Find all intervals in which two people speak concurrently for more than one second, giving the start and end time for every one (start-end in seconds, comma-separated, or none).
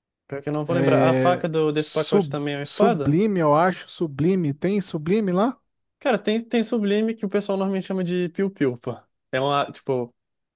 0.7-3.2